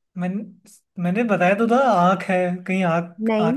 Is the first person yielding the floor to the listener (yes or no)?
yes